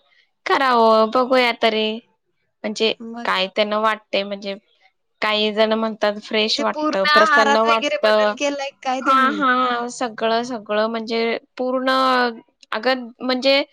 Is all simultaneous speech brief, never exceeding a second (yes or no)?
no